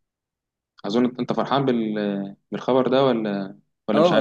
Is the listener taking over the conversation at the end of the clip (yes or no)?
yes